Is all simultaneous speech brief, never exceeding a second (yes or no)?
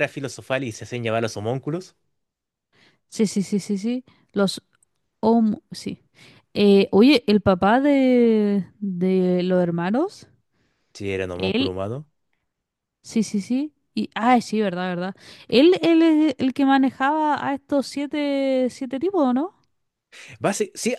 yes